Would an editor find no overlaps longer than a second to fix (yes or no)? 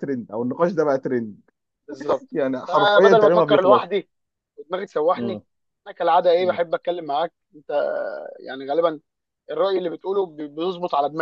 no